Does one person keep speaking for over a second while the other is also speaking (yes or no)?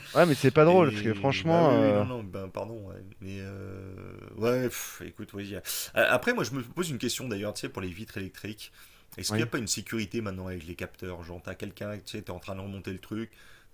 yes